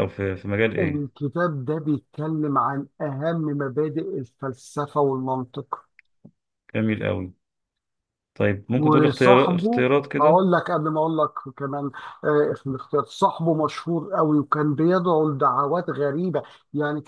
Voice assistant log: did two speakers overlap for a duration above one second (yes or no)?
yes